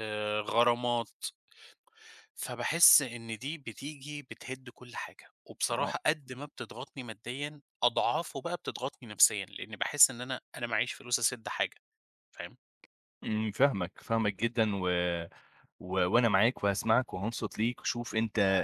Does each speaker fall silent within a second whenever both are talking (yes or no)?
yes